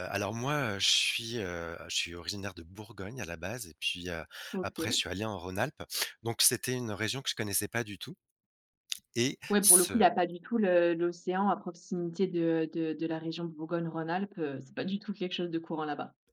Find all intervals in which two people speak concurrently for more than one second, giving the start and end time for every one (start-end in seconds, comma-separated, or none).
none